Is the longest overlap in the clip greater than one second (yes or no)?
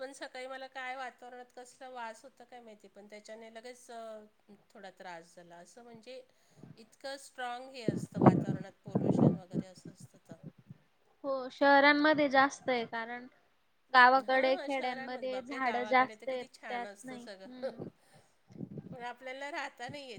yes